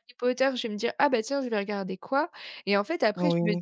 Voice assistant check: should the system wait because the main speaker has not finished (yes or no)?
yes